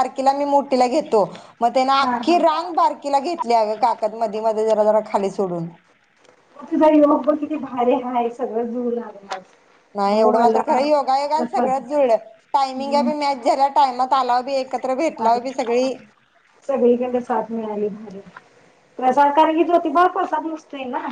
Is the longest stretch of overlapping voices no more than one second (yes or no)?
no